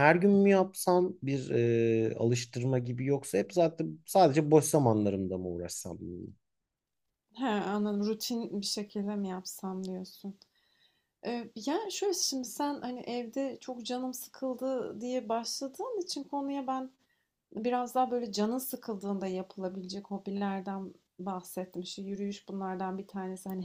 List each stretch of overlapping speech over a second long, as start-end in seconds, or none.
none